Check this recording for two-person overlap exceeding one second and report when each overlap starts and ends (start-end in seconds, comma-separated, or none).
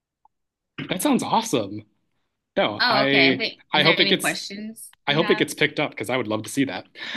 2.8-4.4